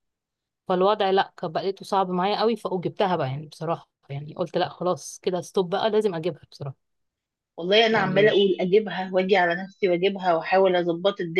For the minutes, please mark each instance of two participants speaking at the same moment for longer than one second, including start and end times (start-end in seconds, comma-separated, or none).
none